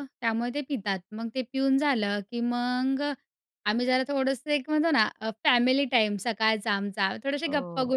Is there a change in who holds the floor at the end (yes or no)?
no